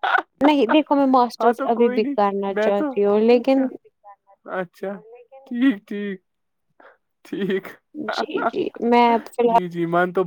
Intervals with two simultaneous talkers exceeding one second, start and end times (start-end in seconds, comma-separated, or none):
1.4-3.7